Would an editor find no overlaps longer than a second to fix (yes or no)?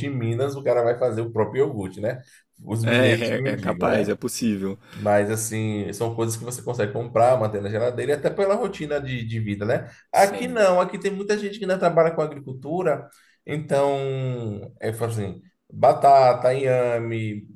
no